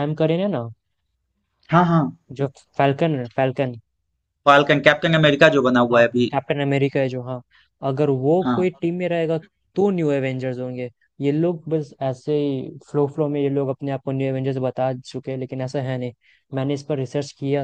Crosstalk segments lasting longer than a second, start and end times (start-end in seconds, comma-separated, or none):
none